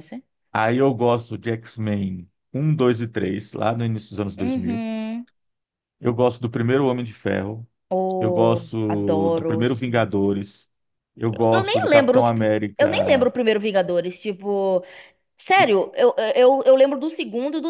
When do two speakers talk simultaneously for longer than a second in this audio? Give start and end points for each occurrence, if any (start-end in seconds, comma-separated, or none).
8.2-10.1, 11.3-13.3